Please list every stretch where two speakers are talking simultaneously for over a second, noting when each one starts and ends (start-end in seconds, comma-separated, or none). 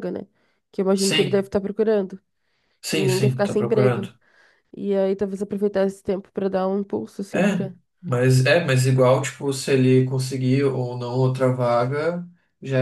2.9-4.1